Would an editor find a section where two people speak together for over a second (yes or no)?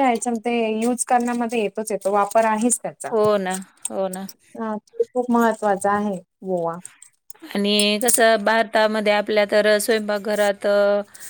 no